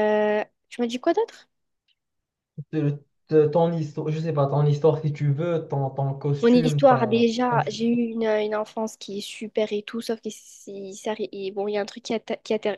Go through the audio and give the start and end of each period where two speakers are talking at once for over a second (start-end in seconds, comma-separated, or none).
6.4-7.9